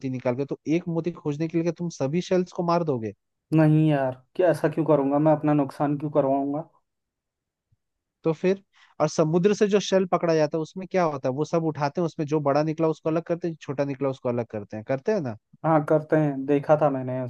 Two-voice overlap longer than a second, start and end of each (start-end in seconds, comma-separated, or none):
none